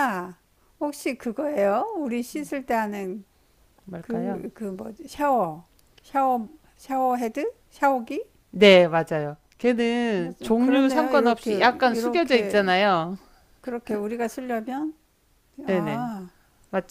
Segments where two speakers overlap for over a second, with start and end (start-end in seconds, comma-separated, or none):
10.2-12.7